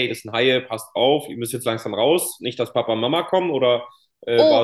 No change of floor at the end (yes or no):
no